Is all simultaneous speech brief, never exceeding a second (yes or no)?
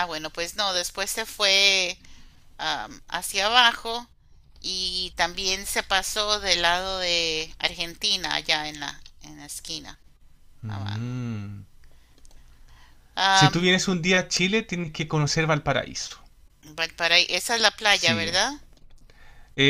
yes